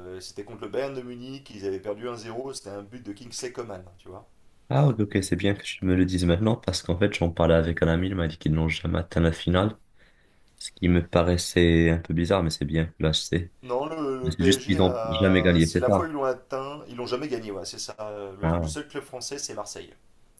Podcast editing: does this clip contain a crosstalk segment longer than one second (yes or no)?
yes